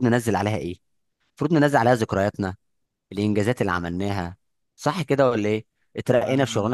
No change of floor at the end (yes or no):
yes